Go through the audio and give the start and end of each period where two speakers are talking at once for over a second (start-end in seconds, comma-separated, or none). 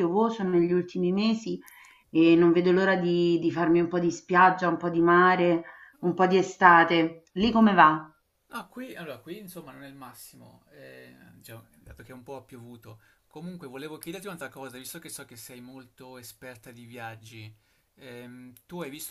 none